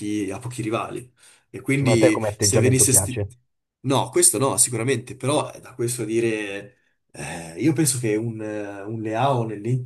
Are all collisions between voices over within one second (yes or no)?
no